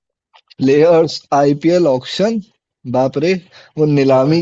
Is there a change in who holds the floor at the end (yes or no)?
no